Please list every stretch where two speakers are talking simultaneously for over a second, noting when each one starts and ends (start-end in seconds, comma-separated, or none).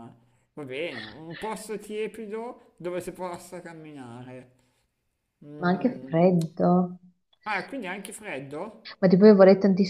none